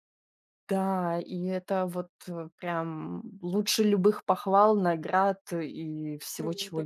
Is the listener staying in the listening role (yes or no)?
no